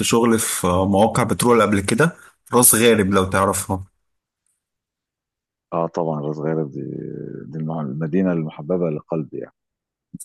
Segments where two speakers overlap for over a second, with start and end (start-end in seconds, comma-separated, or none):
none